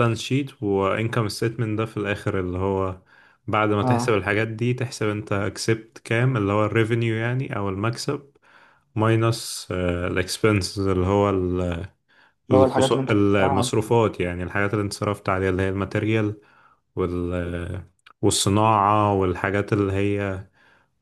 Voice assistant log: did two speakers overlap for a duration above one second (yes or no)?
yes